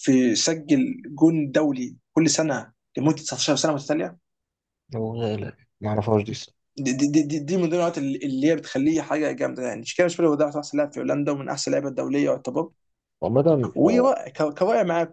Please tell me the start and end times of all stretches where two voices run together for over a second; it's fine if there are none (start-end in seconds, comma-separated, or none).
none